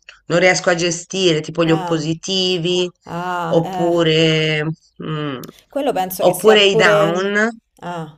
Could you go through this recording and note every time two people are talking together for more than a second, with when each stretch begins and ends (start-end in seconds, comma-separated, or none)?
6.2-7.4